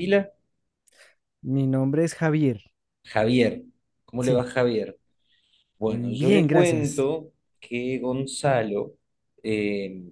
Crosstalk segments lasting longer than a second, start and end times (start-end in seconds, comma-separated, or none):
5.8-7.1